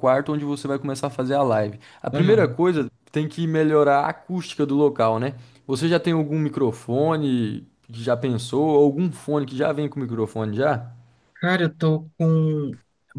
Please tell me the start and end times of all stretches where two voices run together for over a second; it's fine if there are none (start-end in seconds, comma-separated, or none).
none